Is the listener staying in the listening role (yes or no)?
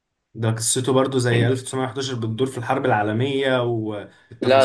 no